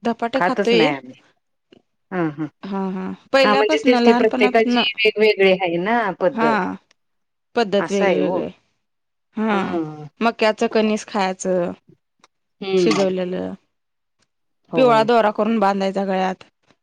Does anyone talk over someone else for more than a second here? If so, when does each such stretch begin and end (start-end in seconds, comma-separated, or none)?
3.4-4.8